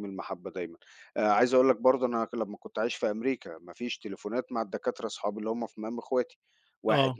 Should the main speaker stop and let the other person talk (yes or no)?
no